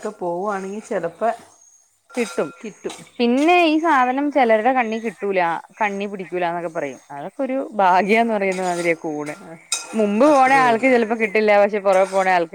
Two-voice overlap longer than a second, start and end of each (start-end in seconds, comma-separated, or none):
none